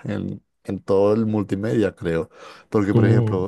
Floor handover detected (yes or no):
no